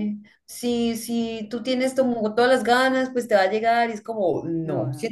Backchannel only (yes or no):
yes